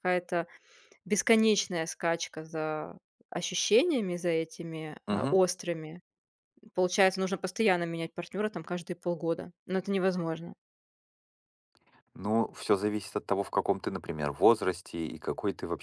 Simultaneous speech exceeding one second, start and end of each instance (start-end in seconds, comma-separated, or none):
none